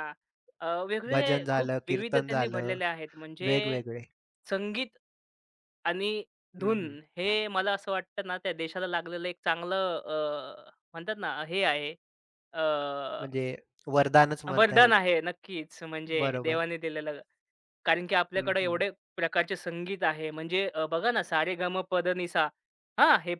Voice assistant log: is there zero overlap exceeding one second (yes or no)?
no